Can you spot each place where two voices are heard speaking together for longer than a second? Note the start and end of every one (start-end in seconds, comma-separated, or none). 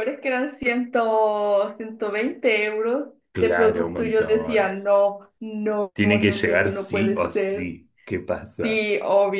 3.3-4.7, 5.9-7.7